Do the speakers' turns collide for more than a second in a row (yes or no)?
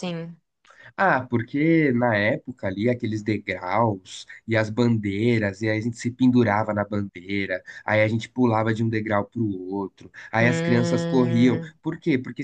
yes